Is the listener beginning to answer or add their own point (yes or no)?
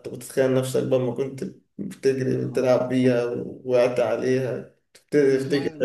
yes